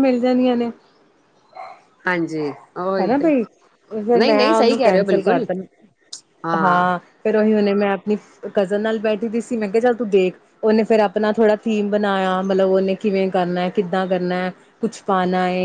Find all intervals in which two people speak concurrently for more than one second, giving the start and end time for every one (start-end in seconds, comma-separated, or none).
4.2-5.5